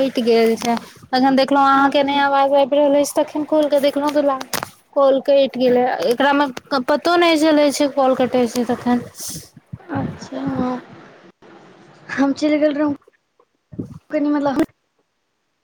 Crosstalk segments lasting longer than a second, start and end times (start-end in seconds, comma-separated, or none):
none